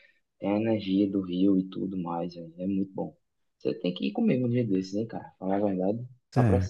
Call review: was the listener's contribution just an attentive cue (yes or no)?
no